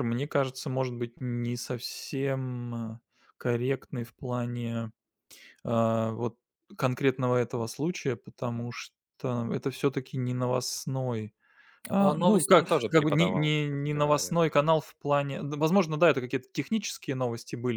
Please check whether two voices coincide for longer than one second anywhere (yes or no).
yes